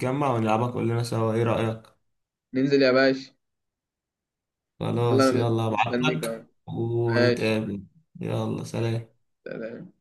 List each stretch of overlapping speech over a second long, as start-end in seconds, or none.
5.1-6.4